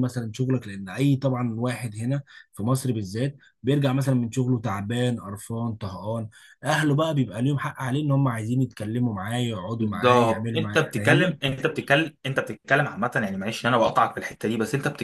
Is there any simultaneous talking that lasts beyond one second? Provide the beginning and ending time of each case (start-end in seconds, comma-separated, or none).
9.8-11.4